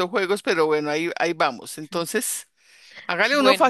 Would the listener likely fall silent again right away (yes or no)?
yes